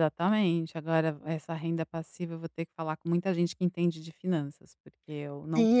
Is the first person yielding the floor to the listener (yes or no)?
yes